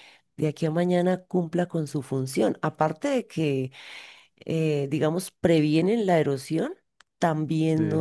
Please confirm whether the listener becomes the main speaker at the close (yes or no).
no